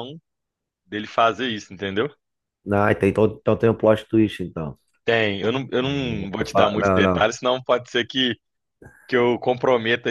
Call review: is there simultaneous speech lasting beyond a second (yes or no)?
yes